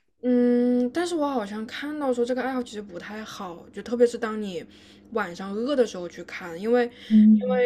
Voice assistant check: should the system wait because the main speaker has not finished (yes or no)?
yes